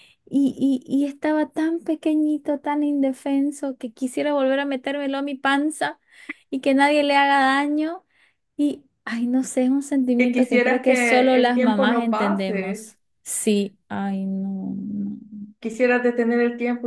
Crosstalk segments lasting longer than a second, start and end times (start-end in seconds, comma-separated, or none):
10.2-12.9